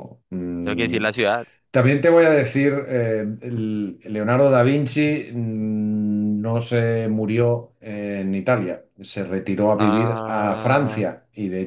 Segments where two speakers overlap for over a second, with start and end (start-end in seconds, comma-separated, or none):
9.8-11.1